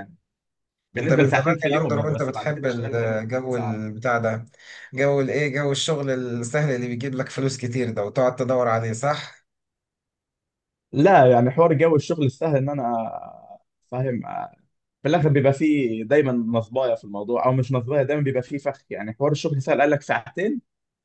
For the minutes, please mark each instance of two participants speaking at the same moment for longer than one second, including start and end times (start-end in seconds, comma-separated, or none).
1.0-3.8